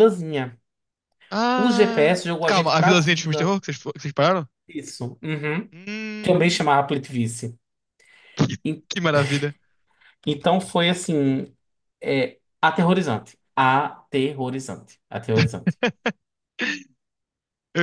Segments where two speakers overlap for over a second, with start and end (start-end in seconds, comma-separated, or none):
1.6-3.6